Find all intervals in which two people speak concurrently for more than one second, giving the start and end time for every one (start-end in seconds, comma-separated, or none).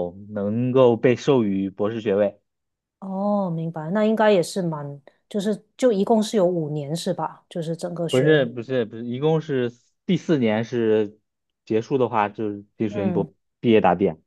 none